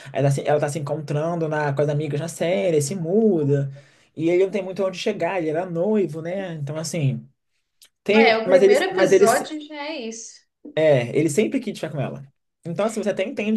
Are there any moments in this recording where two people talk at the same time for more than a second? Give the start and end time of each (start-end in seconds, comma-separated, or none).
8.1-9.4